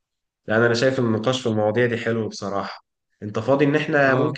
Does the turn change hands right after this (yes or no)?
no